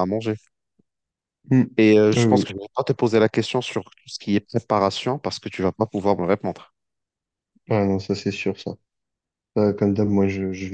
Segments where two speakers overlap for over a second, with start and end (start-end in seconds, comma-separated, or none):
none